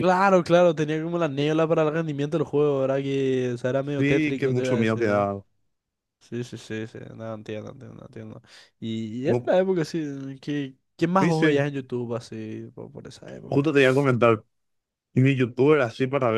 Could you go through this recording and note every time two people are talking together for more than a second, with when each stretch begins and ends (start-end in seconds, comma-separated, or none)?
4.0-5.3